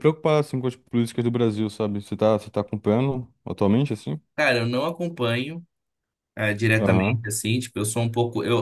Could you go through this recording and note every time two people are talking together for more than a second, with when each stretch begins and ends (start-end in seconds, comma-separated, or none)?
none